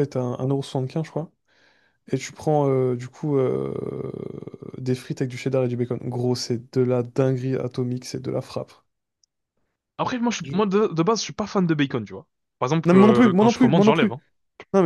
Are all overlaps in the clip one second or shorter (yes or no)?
no